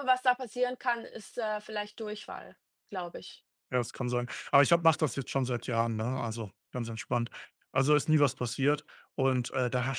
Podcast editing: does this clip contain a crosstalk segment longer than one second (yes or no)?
no